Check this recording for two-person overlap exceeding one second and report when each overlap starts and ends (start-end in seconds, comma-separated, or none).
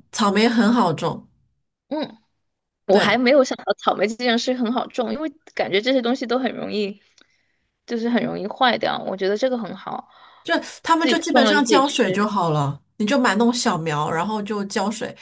11.0-12.3